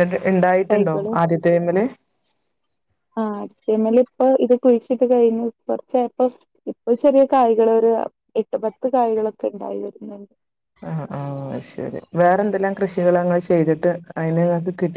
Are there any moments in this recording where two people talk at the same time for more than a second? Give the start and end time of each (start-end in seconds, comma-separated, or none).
none